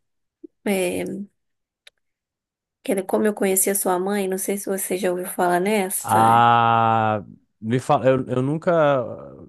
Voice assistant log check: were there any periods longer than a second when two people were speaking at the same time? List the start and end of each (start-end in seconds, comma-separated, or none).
none